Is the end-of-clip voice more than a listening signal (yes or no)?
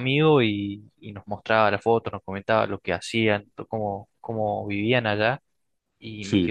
no